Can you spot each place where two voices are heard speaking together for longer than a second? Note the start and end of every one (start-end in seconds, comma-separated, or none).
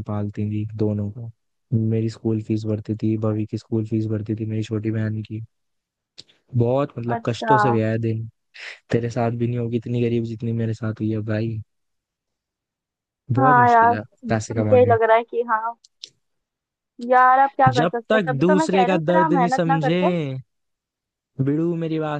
13.4-15.0, 17.7-20.0